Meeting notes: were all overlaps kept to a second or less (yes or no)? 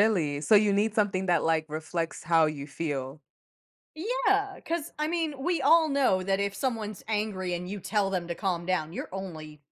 yes